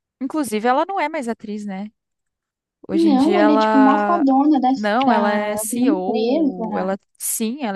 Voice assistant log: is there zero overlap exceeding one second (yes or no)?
no